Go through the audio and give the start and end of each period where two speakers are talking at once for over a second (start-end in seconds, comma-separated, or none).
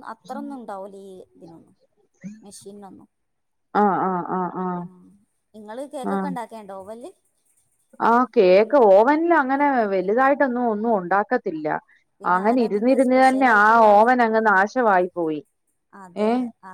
12.3-14.1